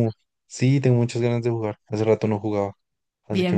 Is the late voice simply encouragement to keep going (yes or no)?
no